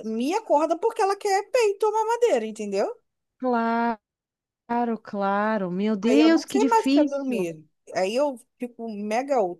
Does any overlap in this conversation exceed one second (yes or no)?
yes